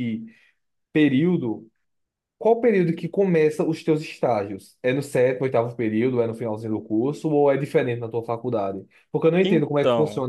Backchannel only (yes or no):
yes